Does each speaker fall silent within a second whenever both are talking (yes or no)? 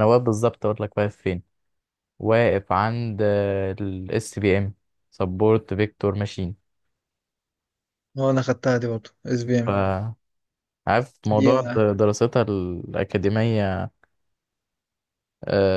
yes